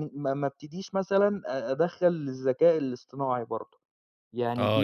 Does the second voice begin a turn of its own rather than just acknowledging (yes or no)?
yes